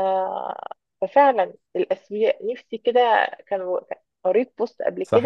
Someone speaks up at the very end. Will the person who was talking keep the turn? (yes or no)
no